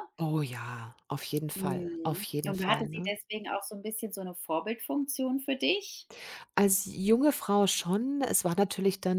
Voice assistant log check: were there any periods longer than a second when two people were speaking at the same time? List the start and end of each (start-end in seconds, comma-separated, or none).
1.6-3.1